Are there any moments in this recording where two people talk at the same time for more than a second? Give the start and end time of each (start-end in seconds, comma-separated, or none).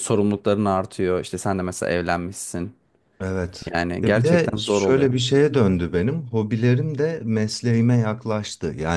3.7-5.1